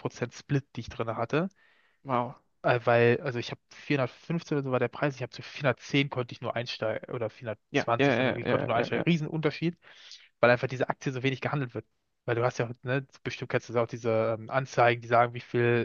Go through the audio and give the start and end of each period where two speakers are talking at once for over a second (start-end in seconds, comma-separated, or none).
7.7-9.1